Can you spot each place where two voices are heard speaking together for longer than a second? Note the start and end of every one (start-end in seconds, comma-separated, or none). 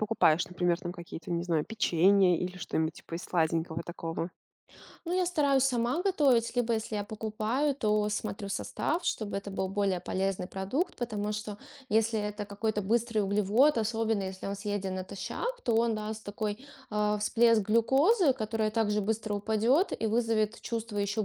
none